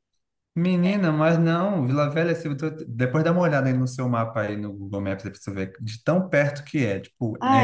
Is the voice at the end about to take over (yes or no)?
no